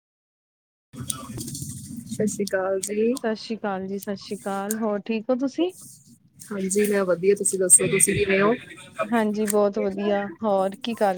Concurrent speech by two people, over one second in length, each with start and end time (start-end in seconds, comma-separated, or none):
none